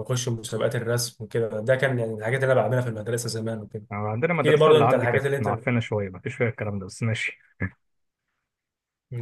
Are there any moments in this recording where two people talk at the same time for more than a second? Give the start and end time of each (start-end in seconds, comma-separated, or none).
4.3-5.7